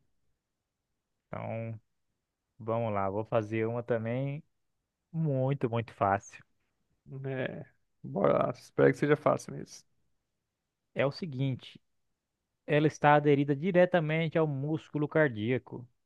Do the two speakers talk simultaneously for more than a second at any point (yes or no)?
no